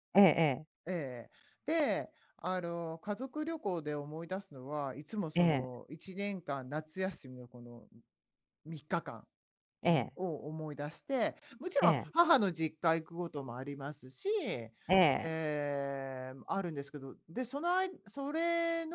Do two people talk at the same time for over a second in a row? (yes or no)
no